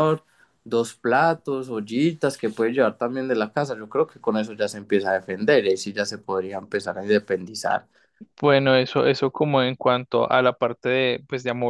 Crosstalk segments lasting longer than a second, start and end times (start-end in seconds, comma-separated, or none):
none